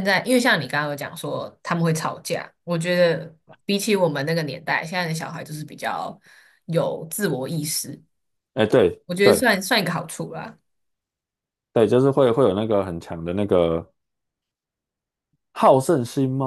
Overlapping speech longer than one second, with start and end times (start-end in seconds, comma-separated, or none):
none